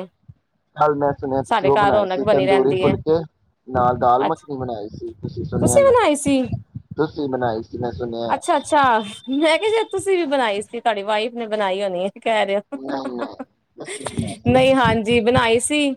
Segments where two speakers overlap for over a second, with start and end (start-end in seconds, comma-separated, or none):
1.5-3.0